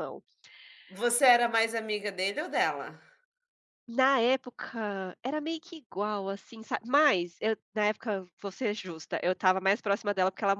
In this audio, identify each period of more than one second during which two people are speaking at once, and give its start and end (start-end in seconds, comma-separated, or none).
none